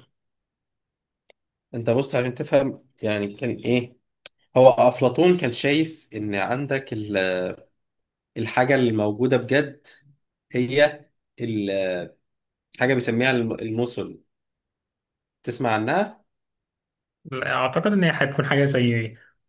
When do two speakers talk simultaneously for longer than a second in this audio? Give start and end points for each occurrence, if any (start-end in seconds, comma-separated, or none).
none